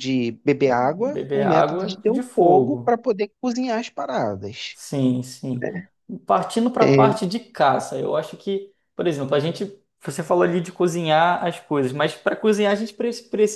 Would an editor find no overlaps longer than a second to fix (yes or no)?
no